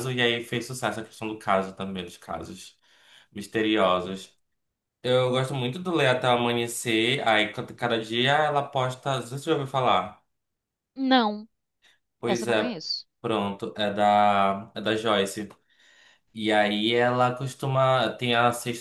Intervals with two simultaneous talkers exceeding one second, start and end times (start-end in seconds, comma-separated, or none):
none